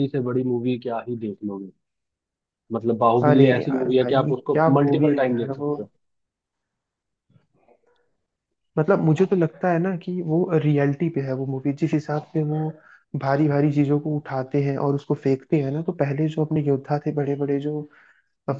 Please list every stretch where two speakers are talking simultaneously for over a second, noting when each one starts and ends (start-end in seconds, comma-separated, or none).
3.3-5.8